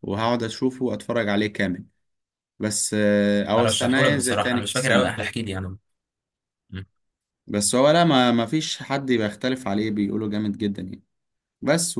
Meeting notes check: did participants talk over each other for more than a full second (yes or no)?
yes